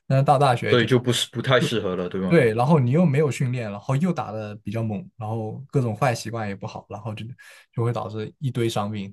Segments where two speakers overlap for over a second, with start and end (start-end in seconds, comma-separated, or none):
none